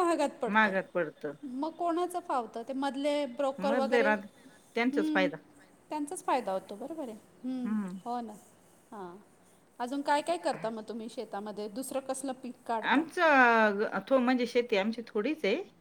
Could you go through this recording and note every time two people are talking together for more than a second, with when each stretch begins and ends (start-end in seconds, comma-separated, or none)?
3.7-5.3